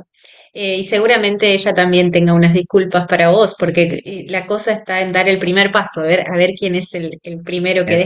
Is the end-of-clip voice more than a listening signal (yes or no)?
no